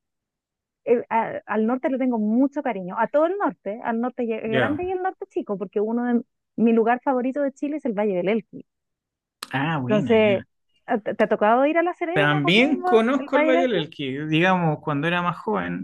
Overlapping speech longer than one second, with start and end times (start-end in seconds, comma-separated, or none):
12.1-13.8